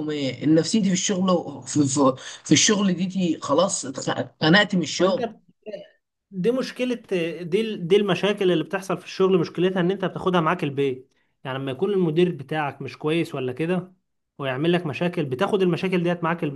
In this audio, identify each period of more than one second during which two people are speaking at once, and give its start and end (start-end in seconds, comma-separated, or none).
none